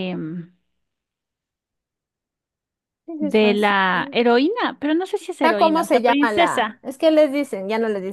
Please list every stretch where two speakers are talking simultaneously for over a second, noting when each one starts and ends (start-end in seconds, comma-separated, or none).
5.4-6.8